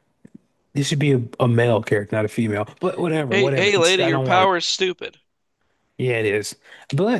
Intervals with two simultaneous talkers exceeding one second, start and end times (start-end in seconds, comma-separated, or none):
3.3-4.5